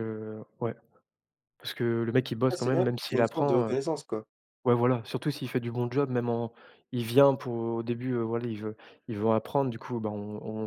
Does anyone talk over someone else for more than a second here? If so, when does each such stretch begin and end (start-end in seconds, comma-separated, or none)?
2.5-3.8